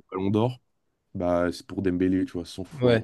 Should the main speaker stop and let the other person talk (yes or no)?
yes